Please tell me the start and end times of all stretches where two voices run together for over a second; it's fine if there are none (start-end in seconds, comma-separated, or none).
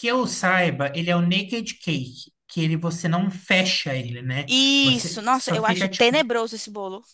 4.5-6.2